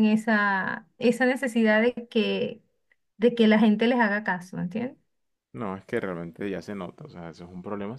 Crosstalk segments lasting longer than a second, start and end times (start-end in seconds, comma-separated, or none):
none